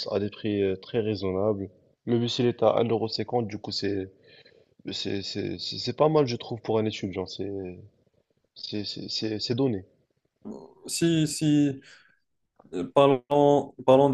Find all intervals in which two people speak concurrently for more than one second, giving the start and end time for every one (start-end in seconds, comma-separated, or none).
none